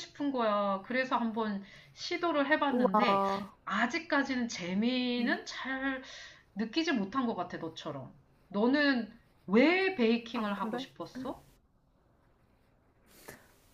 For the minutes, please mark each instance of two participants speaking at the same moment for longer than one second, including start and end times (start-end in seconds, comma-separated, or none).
none